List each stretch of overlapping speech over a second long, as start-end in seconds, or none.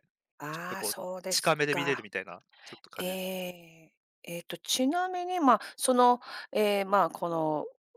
0.5-2.0